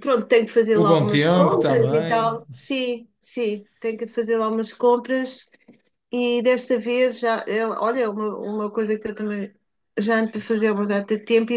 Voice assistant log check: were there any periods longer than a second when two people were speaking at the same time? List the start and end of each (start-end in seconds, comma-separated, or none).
0.8-2.4